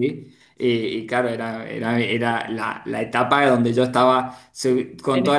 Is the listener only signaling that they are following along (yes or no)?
yes